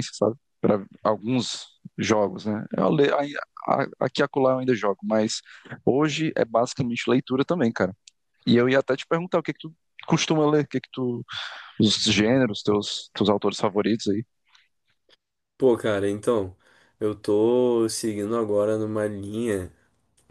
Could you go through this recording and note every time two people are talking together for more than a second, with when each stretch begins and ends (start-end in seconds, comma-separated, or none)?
none